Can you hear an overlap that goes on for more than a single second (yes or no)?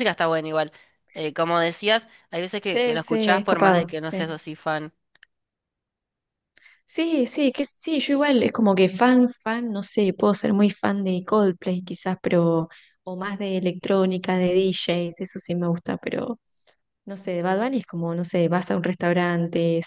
yes